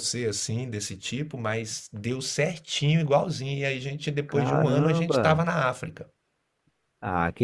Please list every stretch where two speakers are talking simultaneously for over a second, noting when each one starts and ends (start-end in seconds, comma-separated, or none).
4.3-5.5